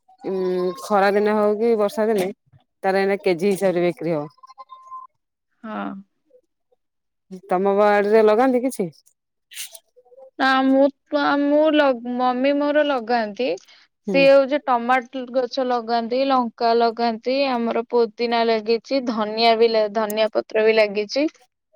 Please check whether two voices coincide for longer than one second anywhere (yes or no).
no